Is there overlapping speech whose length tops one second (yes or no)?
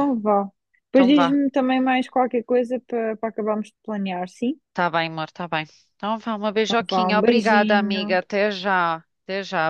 yes